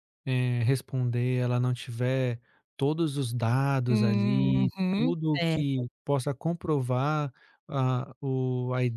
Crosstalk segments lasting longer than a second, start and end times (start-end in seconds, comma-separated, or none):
3.9-5.9